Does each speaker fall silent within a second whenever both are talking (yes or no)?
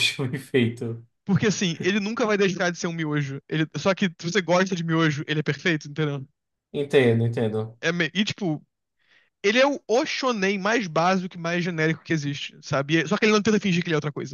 yes